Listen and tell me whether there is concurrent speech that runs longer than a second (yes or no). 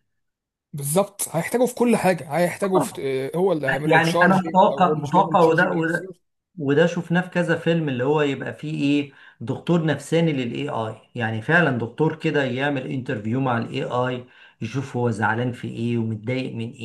yes